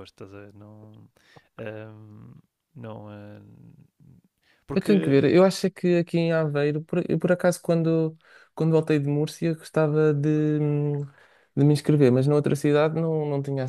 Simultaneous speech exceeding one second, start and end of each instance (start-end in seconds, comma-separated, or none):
none